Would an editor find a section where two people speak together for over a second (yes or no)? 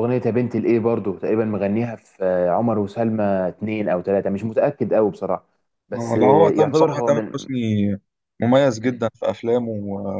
yes